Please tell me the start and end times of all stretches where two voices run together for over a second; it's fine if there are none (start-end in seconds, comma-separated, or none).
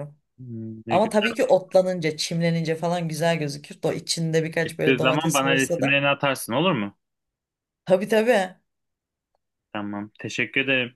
4.6-6.0